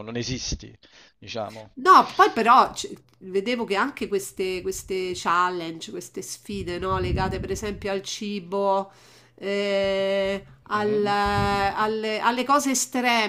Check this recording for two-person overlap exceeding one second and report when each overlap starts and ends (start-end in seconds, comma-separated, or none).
none